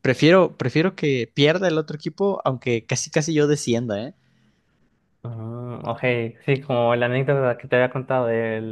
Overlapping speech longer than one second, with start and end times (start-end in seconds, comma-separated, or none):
none